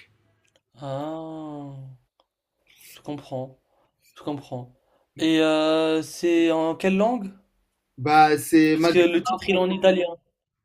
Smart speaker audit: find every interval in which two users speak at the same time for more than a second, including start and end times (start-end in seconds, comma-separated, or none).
8.7-9.9